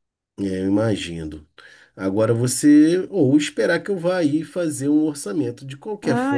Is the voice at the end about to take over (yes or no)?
yes